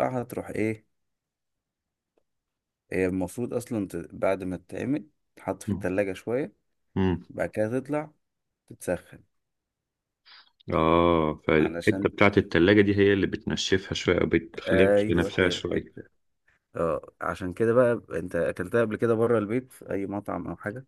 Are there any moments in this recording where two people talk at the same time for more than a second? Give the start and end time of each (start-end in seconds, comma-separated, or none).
14.7-15.9